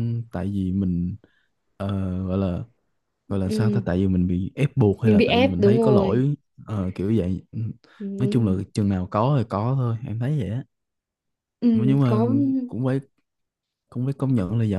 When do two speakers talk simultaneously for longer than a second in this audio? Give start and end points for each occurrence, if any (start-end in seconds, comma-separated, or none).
5.0-6.2